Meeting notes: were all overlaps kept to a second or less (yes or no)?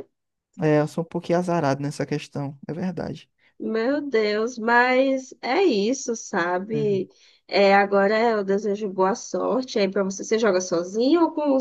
yes